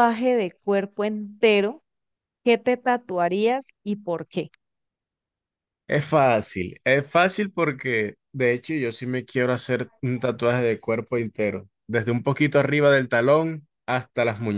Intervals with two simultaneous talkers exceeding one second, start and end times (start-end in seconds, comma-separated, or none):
none